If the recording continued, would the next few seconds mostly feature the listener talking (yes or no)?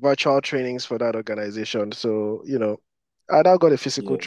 no